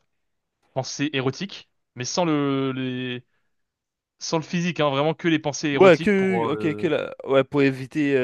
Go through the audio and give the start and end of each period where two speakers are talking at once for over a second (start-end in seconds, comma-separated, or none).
5.7-6.9